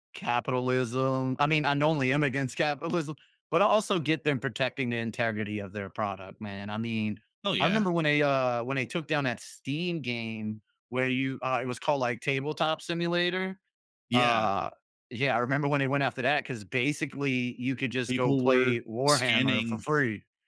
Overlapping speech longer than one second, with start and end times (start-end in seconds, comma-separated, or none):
18.1-19.9